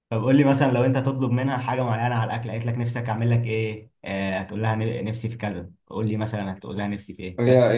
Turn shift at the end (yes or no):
yes